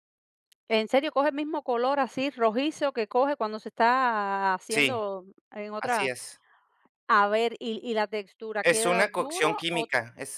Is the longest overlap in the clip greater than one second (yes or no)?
yes